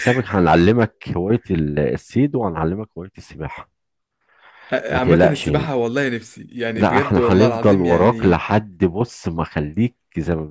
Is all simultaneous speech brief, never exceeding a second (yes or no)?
no